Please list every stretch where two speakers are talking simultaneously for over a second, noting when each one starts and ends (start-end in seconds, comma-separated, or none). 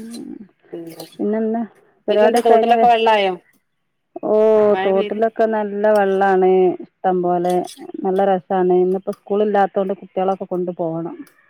none